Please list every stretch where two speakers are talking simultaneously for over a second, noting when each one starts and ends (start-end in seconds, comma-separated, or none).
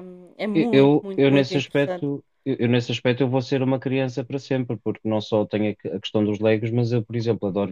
0.6-2.1